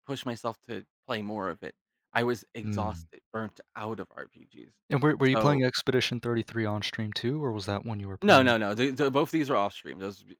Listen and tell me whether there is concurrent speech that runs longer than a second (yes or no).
no